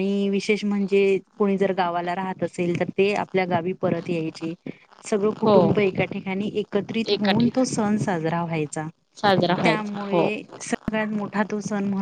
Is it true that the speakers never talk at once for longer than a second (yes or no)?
yes